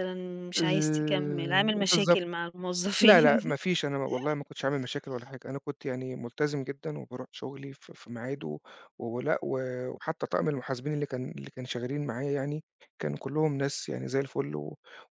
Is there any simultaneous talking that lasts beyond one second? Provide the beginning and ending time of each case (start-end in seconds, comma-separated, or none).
0.6-2.2